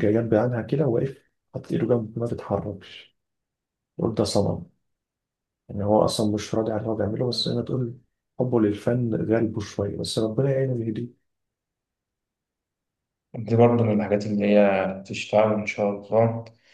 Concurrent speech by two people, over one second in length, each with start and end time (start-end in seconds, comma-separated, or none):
none